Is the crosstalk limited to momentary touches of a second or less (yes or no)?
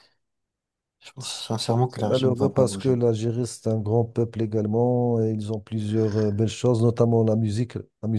no